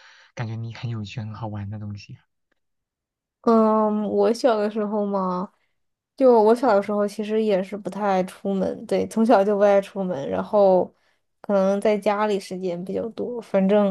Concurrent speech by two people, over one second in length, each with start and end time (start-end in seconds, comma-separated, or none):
none